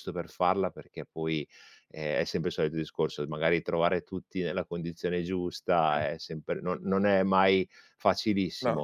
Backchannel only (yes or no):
yes